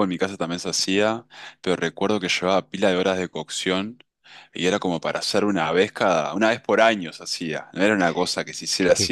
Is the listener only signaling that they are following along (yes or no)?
no